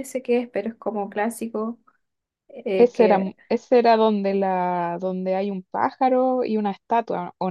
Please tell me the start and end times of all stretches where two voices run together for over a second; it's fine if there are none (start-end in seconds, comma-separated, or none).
none